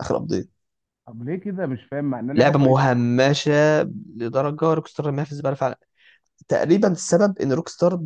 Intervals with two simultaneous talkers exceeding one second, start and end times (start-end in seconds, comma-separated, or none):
none